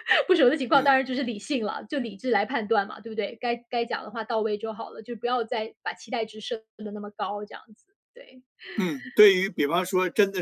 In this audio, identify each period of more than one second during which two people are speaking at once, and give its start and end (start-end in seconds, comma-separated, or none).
none